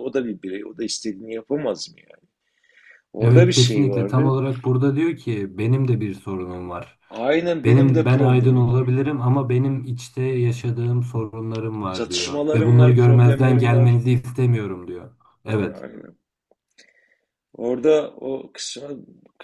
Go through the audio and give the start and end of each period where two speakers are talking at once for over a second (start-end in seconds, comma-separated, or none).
3.2-4.4, 7.6-8.9, 11.9-14.0